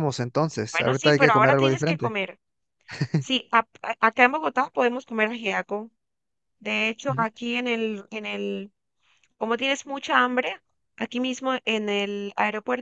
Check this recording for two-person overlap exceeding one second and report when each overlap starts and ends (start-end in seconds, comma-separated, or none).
0.7-2.2